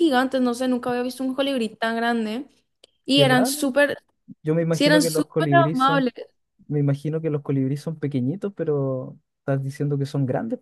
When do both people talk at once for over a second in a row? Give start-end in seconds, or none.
4.7-6.0